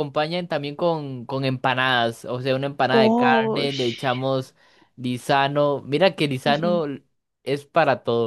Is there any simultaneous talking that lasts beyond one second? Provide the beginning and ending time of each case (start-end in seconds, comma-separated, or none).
2.9-4.2